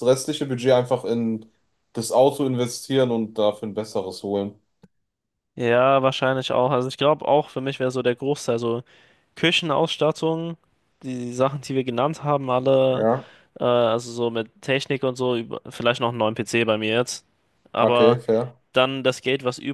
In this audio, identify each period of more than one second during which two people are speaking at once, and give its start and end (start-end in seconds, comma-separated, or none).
none